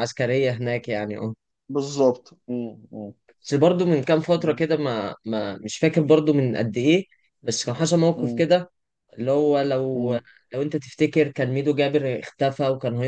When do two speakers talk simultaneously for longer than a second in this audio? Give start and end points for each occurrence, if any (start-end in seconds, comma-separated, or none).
none